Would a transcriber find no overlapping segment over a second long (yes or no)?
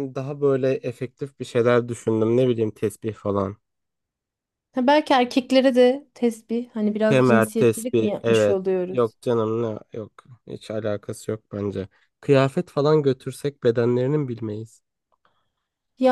no